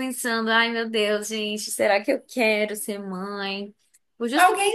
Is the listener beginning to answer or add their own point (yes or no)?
yes